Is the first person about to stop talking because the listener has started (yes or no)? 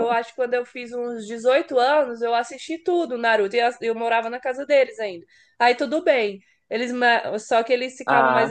no